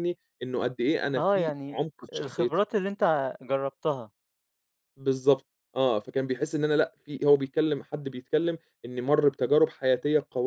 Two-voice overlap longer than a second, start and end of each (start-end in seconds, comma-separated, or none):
1.2-2.7